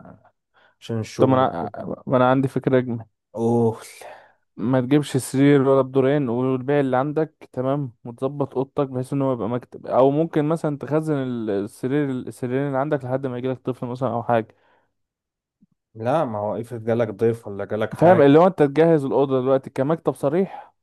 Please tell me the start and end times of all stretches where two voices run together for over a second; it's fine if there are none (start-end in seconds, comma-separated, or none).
none